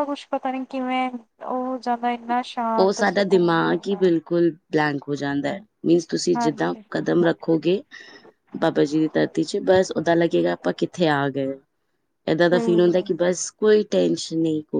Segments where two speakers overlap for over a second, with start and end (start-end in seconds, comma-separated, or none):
2.8-4.0